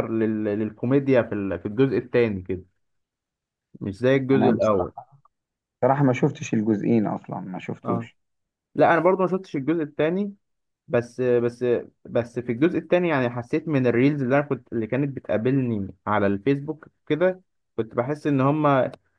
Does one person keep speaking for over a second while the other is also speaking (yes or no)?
no